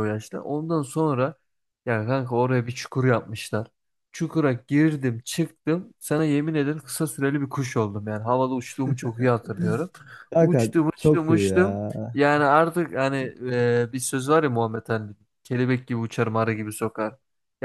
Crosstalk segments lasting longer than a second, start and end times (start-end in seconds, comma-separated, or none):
10.4-11.9